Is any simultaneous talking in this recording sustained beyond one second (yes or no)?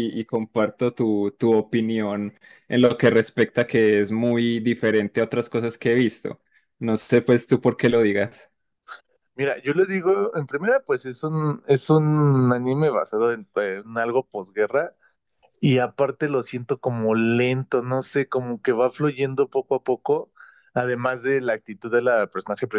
no